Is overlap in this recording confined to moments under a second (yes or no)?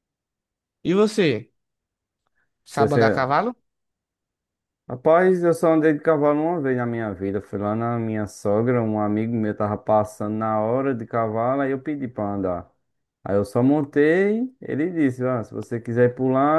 yes